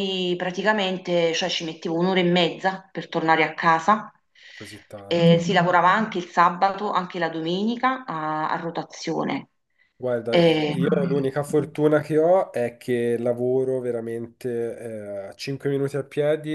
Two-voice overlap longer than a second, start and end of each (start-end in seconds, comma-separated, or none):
none